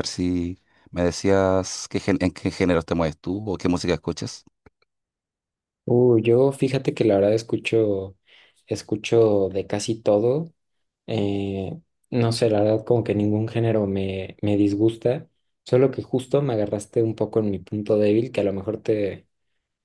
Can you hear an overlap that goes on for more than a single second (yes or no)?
no